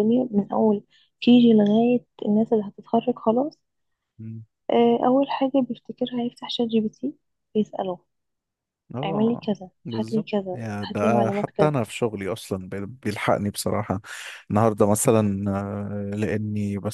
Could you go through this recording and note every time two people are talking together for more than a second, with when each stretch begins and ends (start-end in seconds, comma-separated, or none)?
9.0-11.7